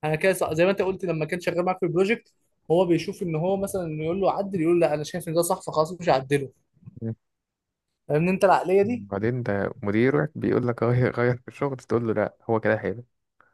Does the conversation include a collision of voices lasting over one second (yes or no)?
no